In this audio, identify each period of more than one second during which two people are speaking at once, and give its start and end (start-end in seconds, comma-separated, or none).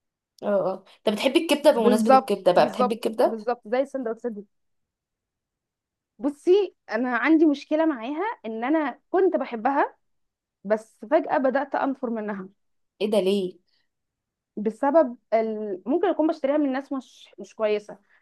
1.7-3.4